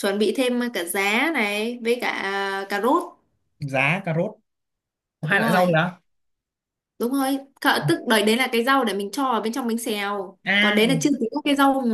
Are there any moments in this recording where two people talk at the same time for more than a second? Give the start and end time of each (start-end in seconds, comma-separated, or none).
none